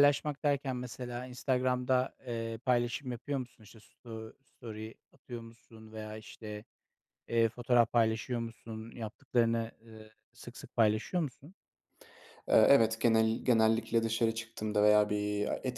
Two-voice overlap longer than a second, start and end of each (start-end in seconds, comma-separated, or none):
none